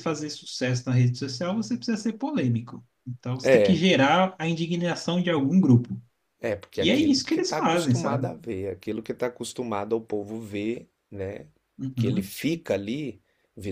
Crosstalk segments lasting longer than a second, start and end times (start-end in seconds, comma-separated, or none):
6.8-8.3